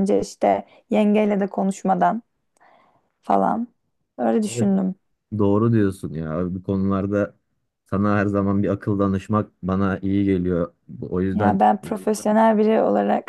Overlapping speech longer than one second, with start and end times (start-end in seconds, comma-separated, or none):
none